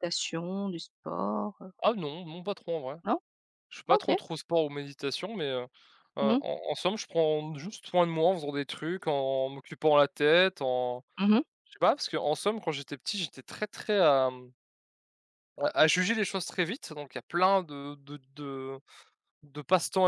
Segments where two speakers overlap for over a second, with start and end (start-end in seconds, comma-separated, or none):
none